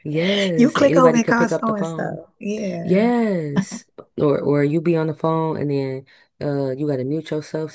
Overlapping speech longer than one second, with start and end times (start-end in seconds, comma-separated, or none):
0.6-2.2